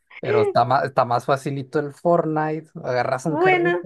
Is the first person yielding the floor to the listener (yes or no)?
no